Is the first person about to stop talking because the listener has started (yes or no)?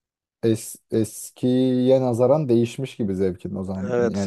yes